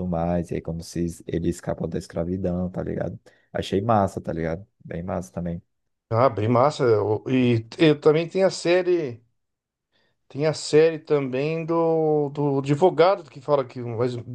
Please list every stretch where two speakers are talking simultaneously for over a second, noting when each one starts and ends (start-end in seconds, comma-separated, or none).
none